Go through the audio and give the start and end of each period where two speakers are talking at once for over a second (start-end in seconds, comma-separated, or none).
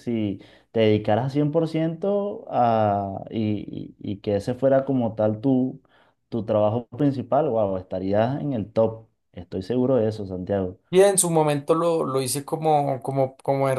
none